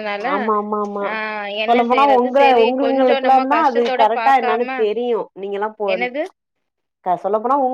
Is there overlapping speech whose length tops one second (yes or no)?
yes